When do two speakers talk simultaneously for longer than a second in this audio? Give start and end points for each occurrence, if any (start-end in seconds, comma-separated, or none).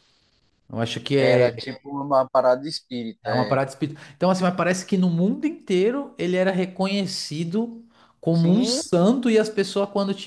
none